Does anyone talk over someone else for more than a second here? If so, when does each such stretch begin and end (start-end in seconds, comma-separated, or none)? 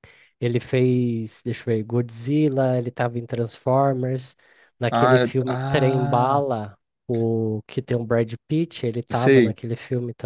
4.9-6.4